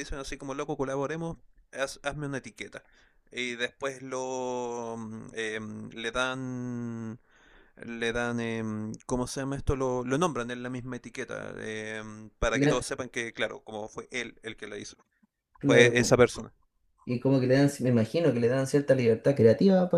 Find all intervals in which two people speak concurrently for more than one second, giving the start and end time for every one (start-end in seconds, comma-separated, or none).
none